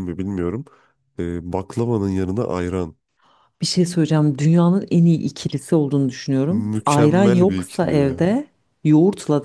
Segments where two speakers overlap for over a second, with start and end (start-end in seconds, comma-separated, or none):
6.5-8.3